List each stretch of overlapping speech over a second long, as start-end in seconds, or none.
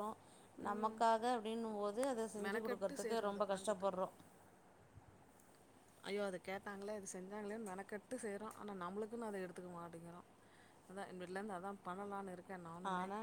2.4-3.9